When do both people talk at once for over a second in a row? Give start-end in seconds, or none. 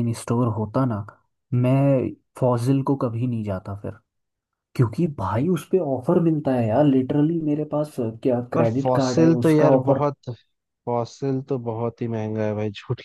8.5-10.0